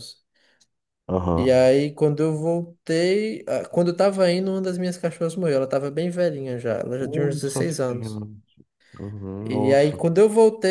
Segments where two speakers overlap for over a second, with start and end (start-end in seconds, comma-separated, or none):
7.0-8.2